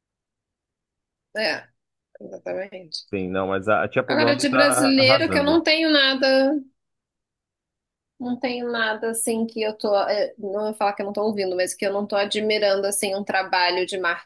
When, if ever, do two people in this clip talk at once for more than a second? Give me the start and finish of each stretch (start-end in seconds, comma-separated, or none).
4.1-5.6